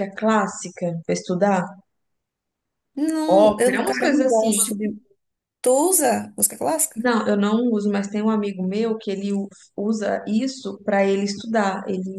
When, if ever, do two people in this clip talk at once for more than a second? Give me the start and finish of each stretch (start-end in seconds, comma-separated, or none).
3.3-4.9